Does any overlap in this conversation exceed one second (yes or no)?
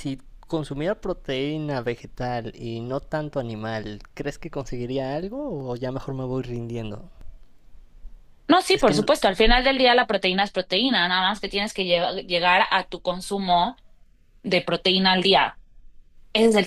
no